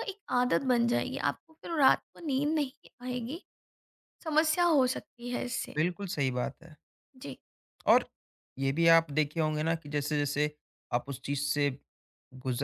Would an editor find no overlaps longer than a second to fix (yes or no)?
yes